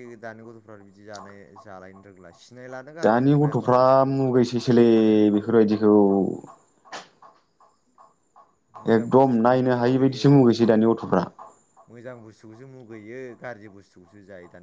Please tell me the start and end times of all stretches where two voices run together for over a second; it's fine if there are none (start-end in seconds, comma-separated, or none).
8.9-10.8